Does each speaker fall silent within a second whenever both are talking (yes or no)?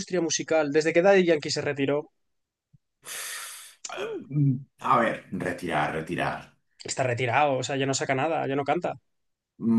yes